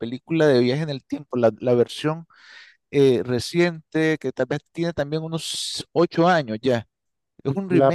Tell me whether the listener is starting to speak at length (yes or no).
yes